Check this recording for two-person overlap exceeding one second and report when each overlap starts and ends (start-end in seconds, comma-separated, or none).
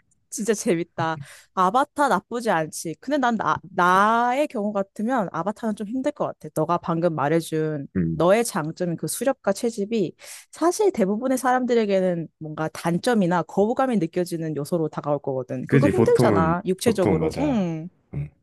15.7-17.7